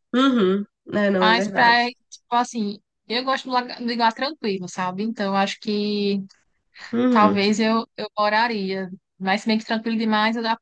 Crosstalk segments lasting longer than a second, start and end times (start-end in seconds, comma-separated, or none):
none